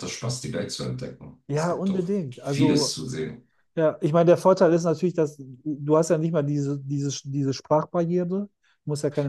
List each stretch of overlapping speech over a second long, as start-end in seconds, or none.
1.5-3.0